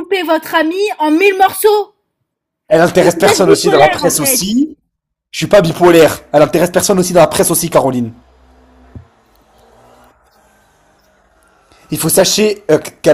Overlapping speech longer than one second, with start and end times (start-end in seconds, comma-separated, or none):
3.0-4.4